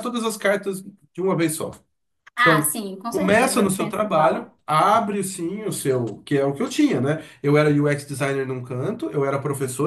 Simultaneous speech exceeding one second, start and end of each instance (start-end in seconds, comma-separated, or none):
2.4-4.6